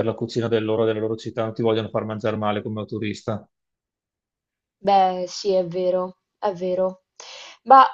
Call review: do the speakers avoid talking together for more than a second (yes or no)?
yes